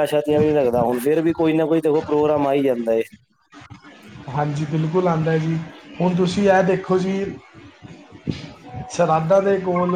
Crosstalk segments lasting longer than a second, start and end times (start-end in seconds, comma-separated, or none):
none